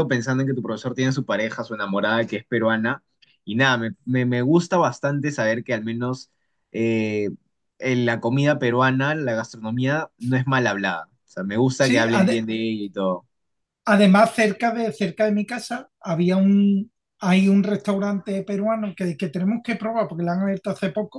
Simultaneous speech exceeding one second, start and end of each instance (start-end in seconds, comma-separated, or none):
none